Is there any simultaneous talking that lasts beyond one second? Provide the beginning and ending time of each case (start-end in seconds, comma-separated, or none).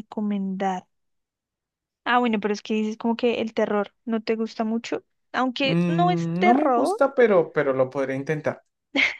5.6-7.0